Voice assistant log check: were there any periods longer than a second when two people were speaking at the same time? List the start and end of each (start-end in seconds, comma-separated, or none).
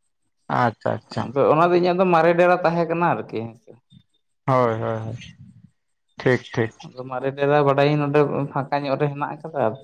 none